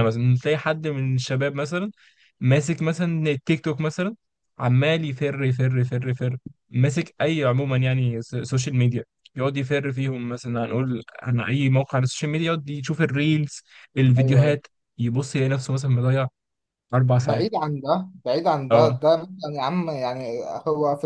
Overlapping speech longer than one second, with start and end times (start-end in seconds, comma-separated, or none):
none